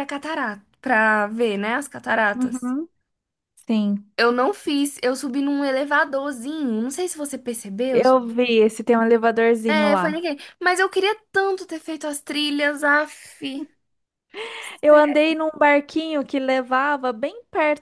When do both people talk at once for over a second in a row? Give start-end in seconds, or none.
none